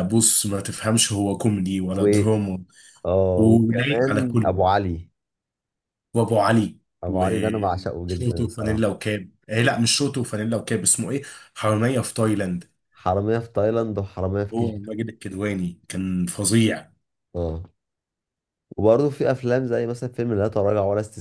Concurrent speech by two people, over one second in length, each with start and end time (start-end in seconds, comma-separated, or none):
3.4-4.6, 7.0-8.9